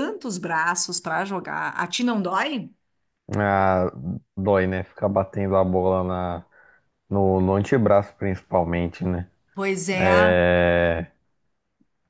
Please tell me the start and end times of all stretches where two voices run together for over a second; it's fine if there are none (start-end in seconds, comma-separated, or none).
none